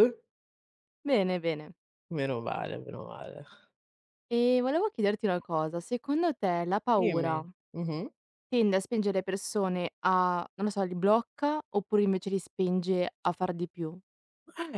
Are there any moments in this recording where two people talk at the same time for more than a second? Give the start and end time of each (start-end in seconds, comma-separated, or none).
none